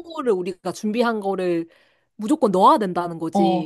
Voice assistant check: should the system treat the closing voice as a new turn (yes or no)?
yes